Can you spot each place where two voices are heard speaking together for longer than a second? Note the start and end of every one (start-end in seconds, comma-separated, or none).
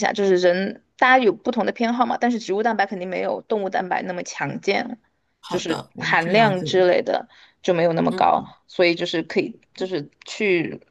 5.5-6.9